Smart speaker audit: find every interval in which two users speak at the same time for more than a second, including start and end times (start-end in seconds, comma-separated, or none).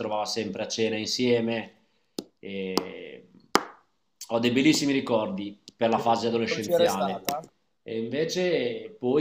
5.9-7.2